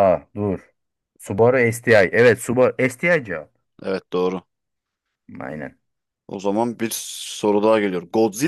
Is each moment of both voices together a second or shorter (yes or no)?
yes